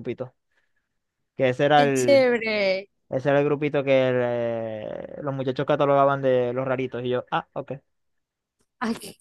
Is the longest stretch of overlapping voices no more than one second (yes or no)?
yes